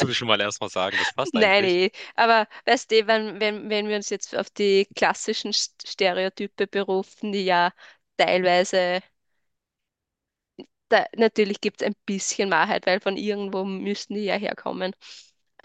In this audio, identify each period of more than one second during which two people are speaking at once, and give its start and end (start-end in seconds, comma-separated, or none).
none